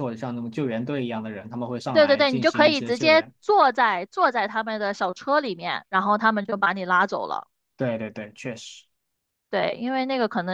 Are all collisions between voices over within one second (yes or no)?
no